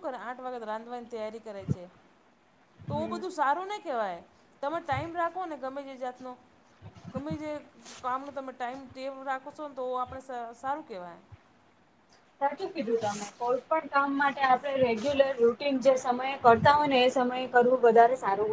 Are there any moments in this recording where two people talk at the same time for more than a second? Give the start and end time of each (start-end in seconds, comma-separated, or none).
none